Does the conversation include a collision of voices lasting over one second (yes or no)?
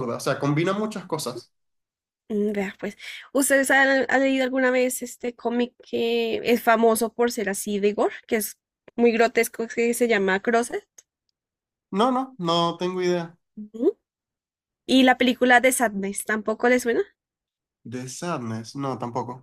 no